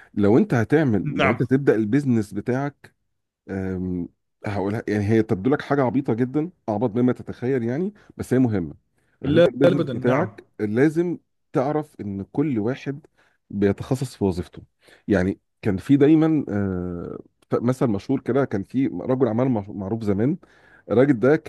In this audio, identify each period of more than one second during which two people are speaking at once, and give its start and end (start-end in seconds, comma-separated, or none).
9.2-10.4